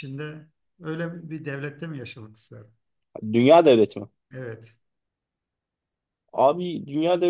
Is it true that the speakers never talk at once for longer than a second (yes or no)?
yes